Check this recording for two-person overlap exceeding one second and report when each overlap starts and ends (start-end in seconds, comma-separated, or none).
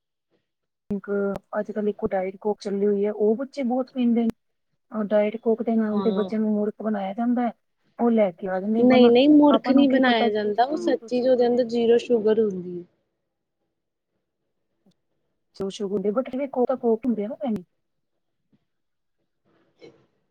9.6-11.6